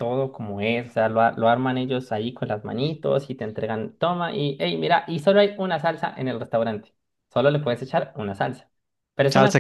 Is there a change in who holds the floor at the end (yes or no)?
no